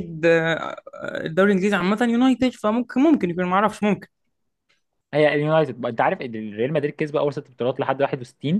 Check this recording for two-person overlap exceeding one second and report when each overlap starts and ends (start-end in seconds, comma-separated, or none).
none